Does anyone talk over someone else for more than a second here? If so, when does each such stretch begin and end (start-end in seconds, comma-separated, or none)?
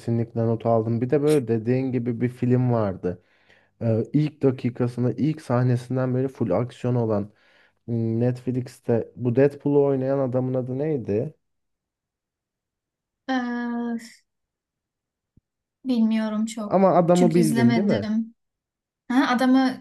16.7-18.1